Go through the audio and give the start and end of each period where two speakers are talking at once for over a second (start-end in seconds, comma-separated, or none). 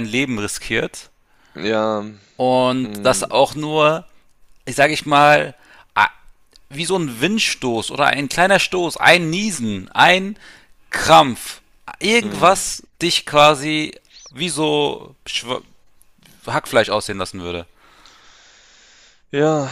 none